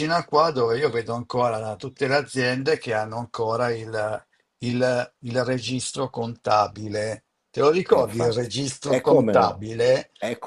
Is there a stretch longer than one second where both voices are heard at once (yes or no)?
yes